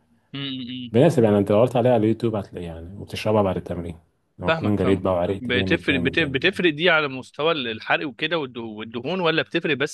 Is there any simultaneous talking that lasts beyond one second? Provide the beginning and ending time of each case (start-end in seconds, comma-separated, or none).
4.5-6.6